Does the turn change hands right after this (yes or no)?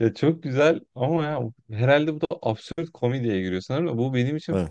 no